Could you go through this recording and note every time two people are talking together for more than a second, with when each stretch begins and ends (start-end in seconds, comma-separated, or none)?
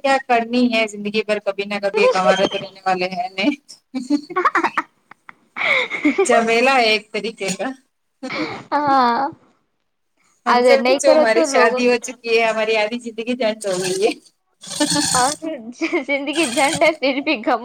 none